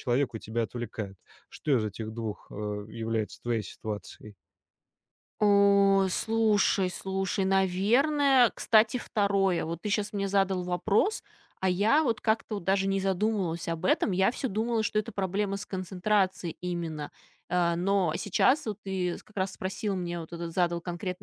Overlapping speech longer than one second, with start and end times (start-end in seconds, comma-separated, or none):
none